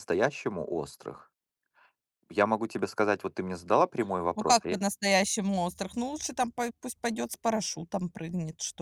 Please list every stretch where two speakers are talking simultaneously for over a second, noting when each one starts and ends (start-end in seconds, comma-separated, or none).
none